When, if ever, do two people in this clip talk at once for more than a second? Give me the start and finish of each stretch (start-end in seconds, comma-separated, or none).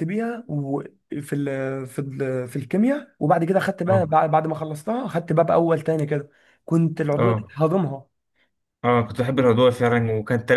none